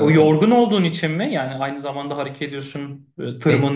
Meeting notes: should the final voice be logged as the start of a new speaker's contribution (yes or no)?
no